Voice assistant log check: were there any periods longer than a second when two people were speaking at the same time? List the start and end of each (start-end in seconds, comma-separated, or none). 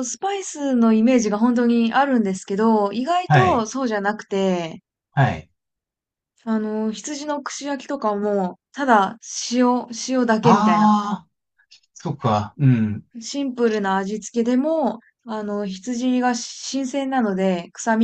none